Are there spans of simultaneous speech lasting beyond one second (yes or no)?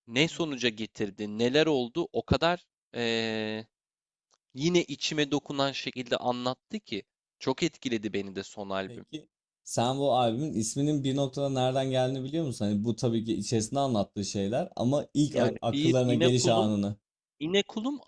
yes